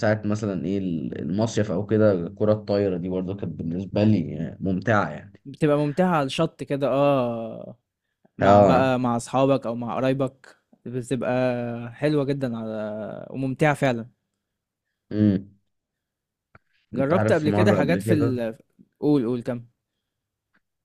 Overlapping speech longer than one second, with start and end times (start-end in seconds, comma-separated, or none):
17.0-18.4